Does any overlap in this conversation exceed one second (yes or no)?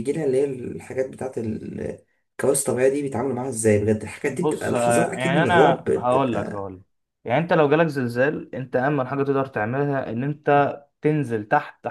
yes